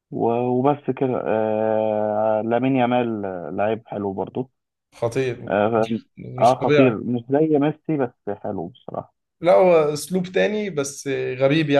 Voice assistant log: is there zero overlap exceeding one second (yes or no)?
no